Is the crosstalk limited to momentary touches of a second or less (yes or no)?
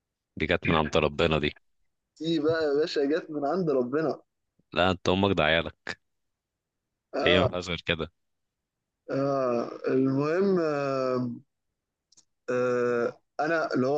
yes